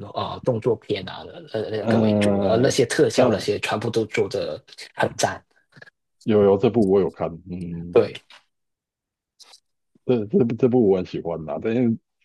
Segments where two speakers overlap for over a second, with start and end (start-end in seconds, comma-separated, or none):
1.8-3.5